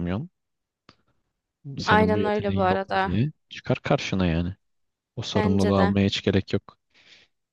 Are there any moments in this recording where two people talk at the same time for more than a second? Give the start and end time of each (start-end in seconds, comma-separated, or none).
1.9-3.1